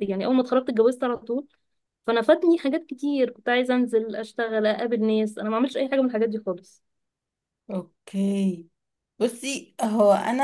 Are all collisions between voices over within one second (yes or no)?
yes